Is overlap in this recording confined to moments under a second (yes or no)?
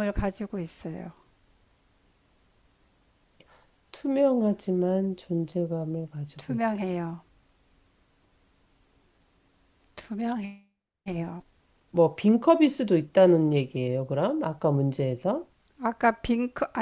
yes